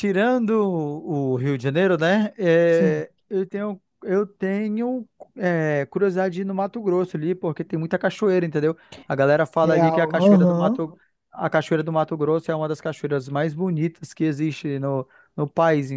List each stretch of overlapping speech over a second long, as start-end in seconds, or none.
9.6-10.9